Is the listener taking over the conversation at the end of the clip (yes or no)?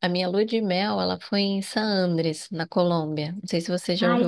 yes